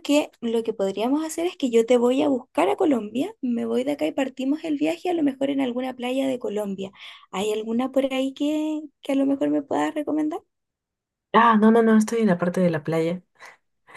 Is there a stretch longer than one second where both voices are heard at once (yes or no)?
no